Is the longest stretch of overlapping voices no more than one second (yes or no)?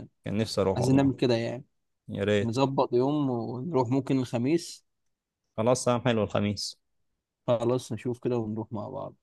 yes